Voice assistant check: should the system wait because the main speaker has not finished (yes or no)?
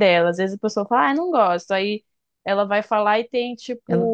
yes